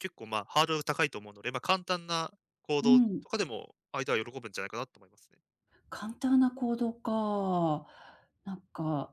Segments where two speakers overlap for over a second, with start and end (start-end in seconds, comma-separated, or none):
none